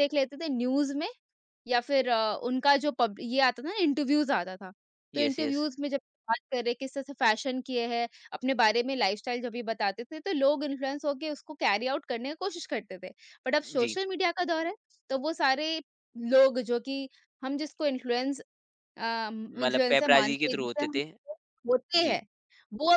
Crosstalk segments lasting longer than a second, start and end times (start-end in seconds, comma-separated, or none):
19.5-21.0